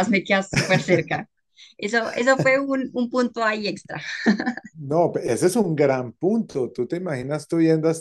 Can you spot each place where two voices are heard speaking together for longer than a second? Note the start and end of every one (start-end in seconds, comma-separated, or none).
none